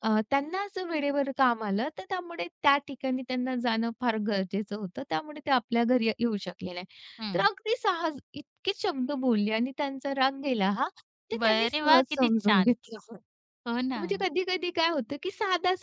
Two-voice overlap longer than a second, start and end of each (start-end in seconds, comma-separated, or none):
11.4-12.7